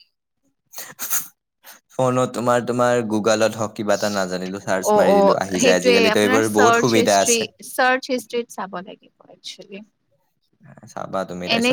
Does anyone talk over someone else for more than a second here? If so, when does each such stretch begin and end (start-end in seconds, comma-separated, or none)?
4.9-7.4